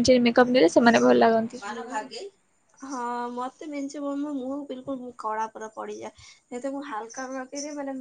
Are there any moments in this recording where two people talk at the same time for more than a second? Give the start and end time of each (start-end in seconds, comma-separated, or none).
none